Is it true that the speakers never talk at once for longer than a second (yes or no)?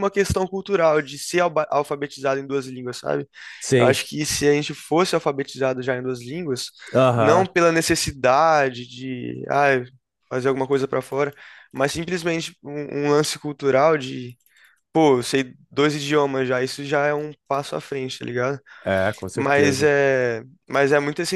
yes